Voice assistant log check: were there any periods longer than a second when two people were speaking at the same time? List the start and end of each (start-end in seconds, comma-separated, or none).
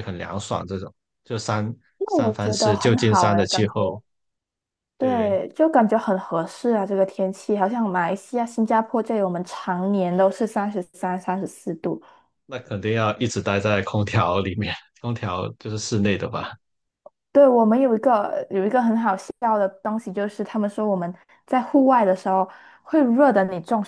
2.0-3.7